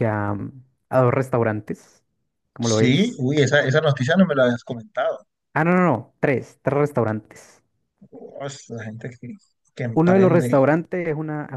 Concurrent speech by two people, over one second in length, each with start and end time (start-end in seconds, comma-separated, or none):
none